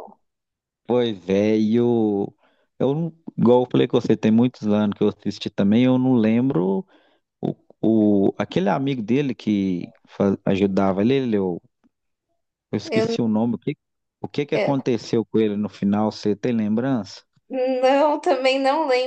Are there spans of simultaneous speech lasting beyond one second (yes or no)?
no